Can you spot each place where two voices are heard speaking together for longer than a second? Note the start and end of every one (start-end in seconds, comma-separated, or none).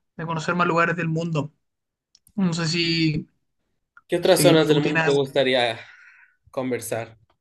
4.2-5.4